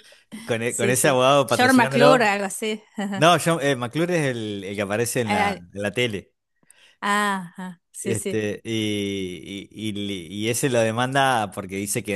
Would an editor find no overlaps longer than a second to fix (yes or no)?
no